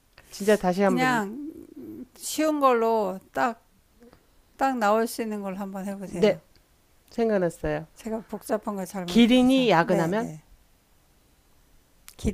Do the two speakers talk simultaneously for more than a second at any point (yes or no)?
yes